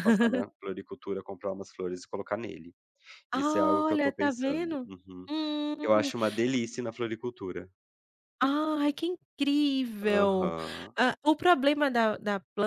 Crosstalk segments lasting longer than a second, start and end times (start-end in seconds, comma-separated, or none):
3.3-4.9